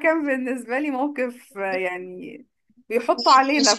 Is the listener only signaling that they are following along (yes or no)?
yes